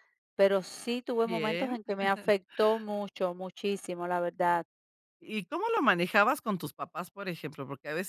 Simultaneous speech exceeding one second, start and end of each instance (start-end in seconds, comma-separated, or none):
none